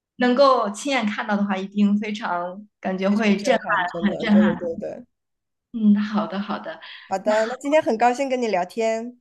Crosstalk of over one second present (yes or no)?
yes